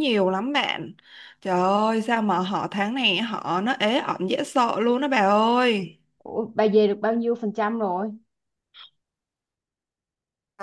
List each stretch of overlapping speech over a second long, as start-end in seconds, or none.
none